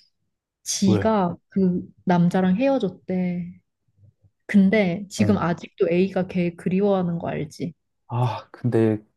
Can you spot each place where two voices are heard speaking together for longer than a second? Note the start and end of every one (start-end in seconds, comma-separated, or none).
none